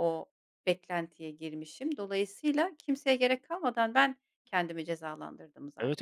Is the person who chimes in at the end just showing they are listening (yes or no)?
no